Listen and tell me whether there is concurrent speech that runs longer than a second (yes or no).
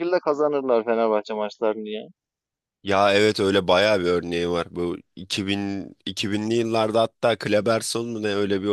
no